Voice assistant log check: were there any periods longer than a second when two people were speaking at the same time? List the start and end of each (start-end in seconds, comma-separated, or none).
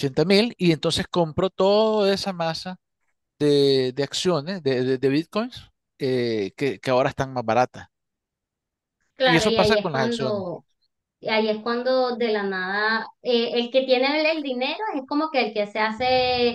9.2-10.4